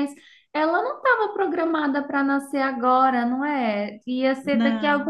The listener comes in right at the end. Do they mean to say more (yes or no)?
no